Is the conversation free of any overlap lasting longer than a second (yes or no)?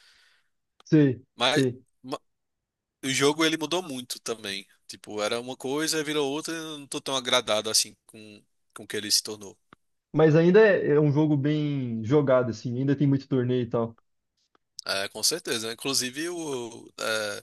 yes